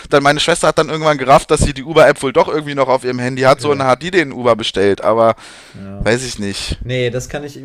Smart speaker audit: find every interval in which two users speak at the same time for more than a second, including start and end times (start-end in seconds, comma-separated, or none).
none